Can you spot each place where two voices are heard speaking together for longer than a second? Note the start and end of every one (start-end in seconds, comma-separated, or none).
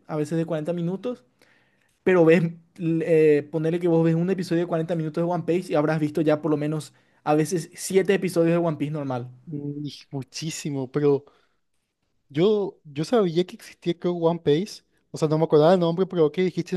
none